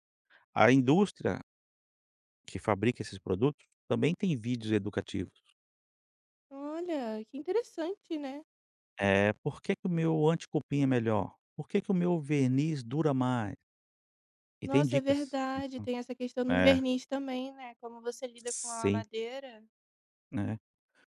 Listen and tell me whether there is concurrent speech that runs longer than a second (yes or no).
yes